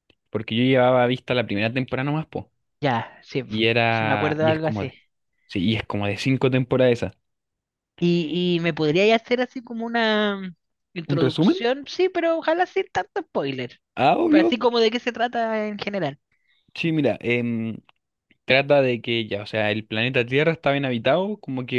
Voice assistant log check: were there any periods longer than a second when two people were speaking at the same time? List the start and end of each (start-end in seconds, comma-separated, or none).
3.5-4.9